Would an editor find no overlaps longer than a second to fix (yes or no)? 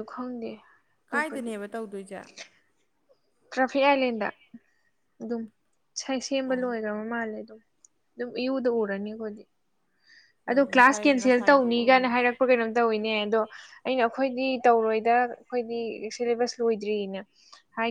no